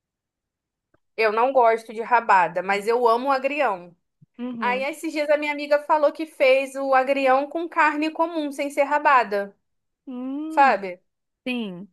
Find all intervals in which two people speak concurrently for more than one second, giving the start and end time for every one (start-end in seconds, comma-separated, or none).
none